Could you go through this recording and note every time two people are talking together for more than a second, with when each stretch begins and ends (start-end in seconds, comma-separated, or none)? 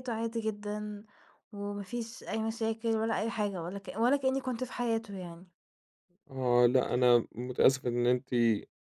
none